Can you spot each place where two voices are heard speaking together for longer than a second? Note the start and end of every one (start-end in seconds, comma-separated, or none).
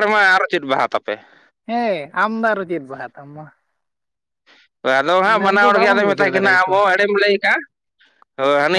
5.2-6.8